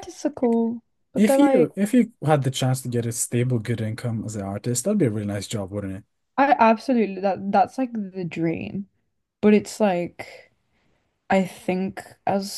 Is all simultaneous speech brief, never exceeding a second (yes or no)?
yes